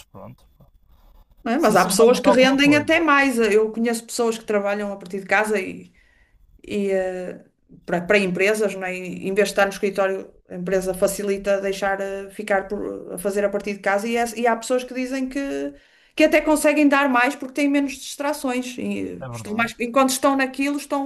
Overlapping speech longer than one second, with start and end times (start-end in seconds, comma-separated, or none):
1.6-2.9